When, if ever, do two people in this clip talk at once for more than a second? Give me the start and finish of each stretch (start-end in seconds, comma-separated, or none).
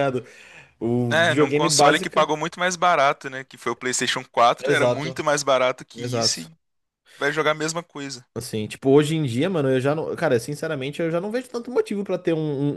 1.1-2.3